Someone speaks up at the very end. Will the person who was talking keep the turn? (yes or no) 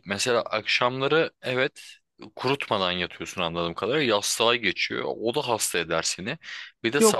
yes